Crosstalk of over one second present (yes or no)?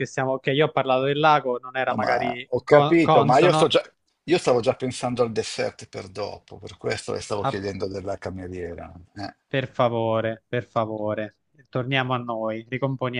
yes